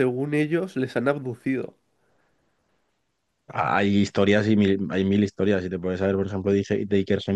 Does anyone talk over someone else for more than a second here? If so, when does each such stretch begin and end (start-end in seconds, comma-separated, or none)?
none